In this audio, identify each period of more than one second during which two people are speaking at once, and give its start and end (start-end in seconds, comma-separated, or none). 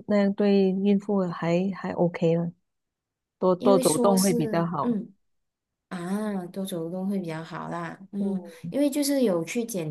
3.6-5.0